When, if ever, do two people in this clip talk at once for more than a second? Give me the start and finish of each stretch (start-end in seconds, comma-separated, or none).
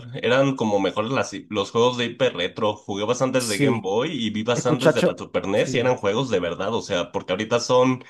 4.5-6.0